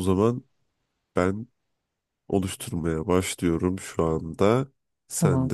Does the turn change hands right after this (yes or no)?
no